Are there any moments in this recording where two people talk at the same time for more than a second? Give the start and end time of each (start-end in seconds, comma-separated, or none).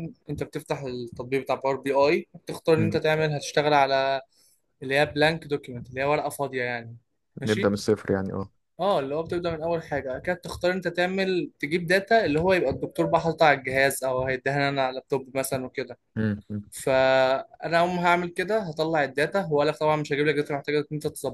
none